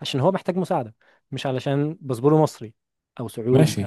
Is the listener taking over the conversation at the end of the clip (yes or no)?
yes